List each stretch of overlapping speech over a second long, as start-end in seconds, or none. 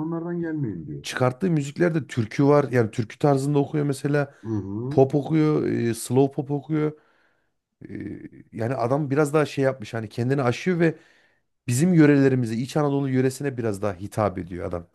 none